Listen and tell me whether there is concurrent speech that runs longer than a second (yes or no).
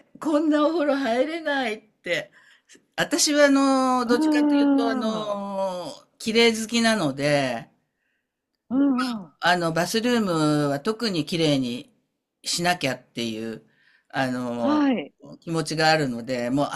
yes